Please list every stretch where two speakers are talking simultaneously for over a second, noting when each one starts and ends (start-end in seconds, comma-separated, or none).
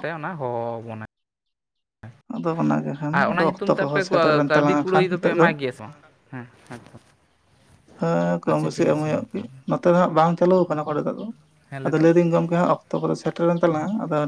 3.1-5.5